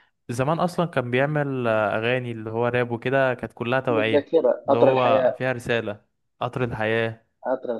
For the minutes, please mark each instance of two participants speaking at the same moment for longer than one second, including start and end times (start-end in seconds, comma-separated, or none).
3.9-5.4